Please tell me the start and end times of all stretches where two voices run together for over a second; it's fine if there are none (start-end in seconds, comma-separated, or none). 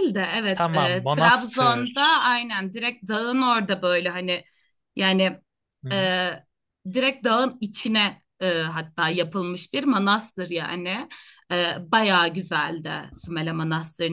0.5-1.9